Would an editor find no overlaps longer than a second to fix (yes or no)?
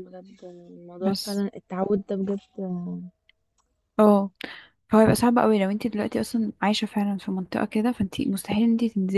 yes